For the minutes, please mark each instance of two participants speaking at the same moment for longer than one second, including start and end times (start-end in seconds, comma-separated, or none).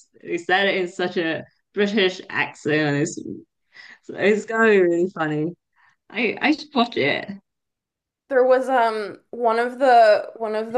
none